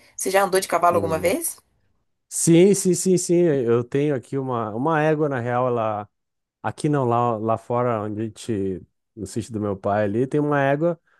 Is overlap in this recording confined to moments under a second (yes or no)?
yes